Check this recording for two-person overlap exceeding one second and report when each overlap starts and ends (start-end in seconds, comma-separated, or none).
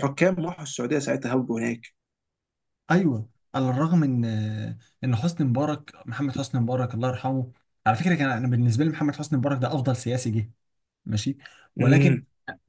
none